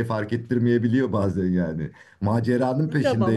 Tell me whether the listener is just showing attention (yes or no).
yes